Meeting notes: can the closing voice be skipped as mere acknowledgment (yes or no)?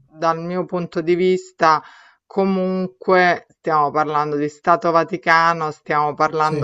yes